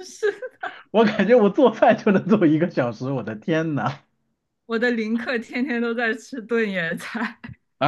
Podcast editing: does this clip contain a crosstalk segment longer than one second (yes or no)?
no